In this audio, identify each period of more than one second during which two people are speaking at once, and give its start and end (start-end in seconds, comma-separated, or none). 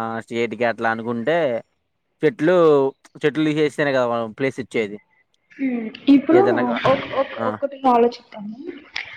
none